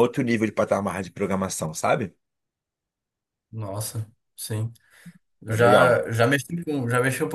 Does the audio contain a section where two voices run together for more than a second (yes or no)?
no